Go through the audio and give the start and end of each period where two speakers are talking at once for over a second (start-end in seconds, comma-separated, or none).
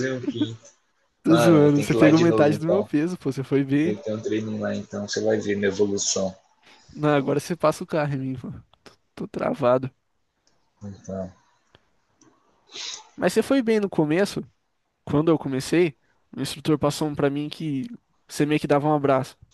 1.3-2.9